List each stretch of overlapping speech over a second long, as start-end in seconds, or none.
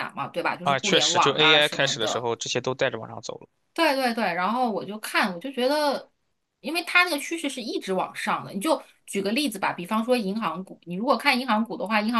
0.6-2.3